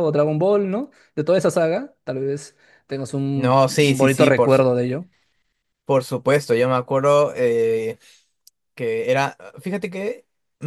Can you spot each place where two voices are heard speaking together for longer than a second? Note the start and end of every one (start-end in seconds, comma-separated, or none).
3.3-4.7